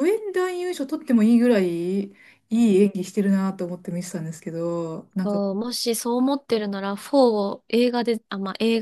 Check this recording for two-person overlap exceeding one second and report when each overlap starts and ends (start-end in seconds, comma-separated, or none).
none